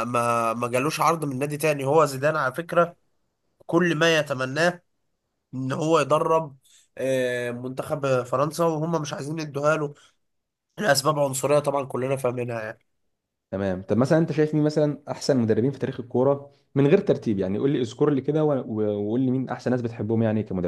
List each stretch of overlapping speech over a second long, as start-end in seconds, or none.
none